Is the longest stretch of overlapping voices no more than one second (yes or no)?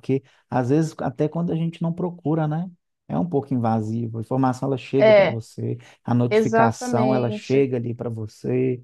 no